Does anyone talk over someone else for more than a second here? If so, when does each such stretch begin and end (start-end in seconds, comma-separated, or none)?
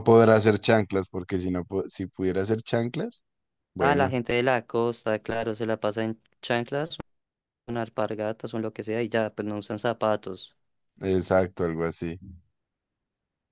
none